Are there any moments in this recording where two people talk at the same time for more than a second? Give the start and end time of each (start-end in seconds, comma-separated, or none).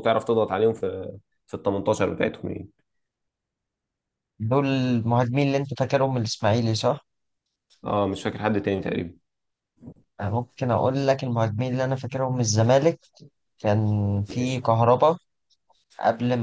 none